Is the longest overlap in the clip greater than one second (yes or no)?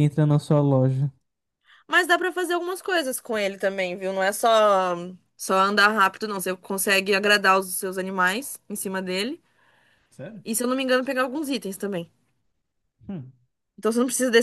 no